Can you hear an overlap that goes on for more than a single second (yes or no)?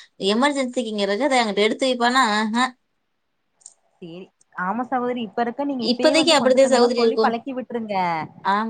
yes